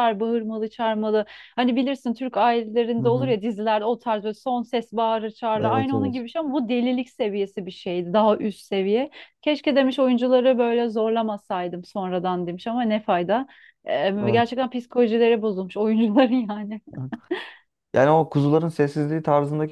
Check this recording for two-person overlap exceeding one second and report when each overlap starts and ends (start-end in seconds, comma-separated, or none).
none